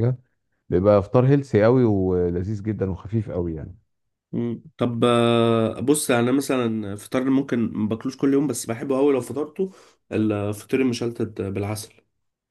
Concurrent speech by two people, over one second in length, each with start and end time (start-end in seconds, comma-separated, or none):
none